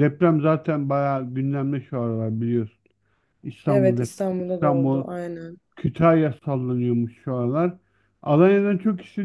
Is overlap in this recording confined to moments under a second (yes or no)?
no